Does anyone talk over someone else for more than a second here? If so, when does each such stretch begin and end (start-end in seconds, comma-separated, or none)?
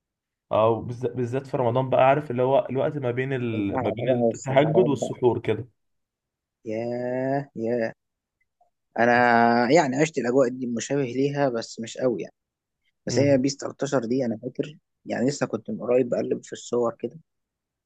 3.5-5.2